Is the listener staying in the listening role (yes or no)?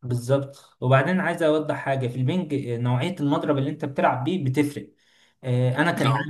yes